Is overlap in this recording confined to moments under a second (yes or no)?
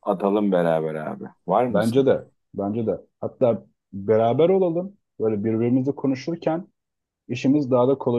yes